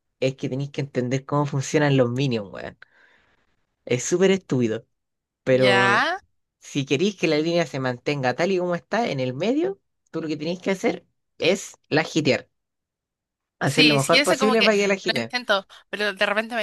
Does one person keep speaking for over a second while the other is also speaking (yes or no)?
yes